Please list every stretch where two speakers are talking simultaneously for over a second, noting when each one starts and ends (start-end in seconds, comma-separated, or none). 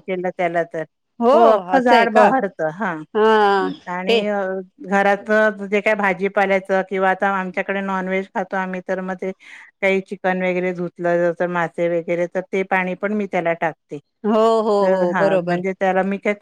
none